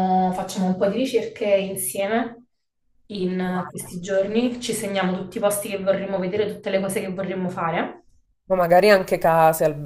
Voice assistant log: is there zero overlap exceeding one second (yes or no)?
yes